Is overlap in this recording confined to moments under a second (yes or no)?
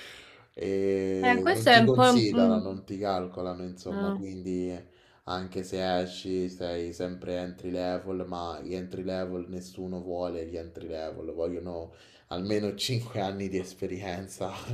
no